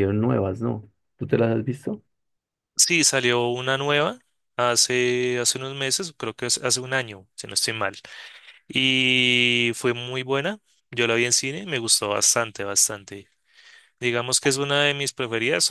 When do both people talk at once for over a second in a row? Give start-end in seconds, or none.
none